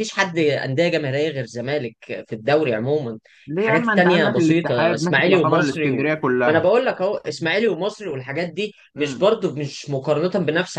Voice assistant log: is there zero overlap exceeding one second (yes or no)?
no